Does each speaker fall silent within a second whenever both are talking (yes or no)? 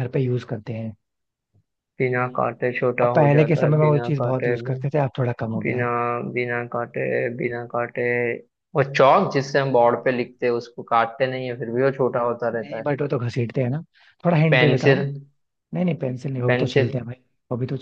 no